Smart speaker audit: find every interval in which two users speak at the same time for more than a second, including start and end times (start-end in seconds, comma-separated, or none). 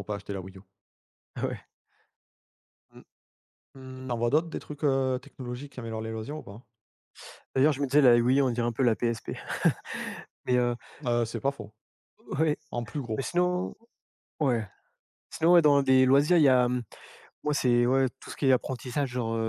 none